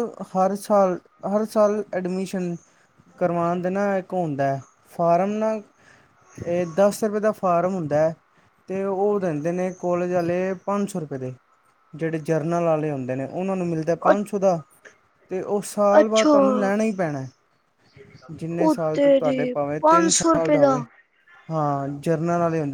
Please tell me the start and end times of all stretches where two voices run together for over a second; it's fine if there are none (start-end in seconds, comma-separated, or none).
18.6-20.6